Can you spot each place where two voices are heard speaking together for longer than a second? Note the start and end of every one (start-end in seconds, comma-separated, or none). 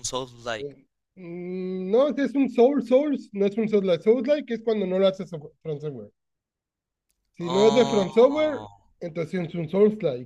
7.4-8.6